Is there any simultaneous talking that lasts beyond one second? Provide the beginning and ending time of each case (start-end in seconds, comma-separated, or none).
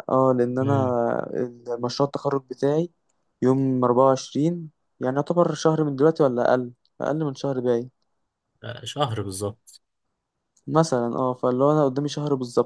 none